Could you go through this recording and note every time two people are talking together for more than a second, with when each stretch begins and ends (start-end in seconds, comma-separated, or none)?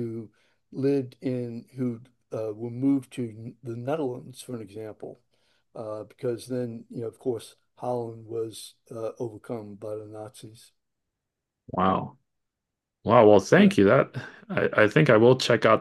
none